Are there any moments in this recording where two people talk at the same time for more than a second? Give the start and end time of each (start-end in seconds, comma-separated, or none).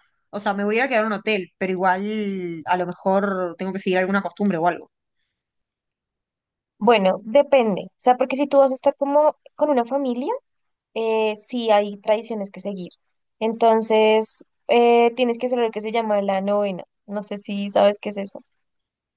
none